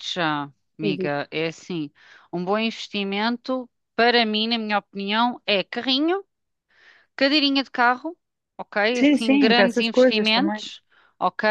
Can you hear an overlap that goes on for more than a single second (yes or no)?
yes